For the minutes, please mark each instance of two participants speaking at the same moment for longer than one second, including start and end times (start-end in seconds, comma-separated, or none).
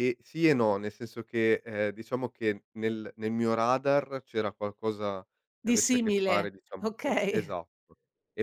5.7-7.5